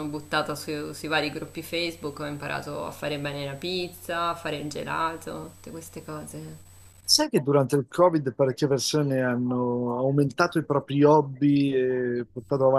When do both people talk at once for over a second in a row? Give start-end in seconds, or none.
none